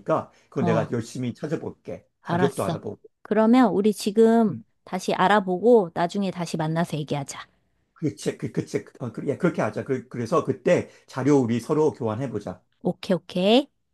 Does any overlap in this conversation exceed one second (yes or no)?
no